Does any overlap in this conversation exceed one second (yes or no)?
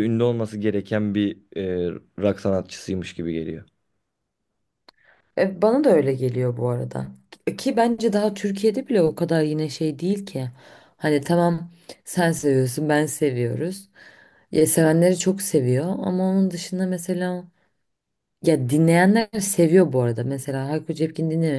no